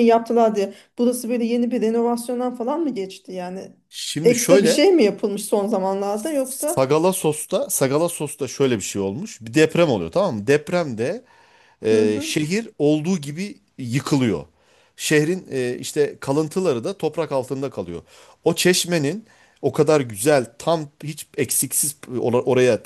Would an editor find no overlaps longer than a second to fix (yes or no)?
yes